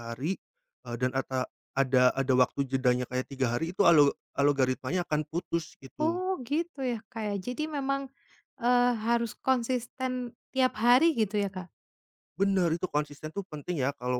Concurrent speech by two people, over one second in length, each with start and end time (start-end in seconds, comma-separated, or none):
none